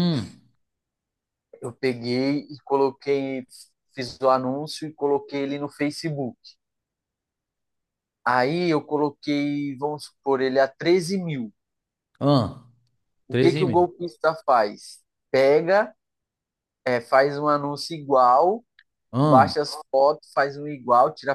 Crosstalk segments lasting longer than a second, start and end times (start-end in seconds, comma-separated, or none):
none